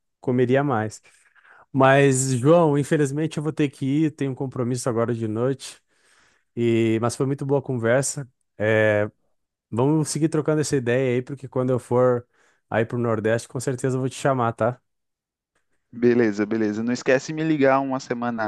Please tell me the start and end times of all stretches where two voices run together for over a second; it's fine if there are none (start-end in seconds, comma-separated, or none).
none